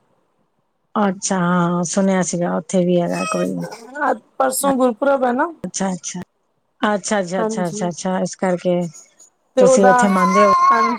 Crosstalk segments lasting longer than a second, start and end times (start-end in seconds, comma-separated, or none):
none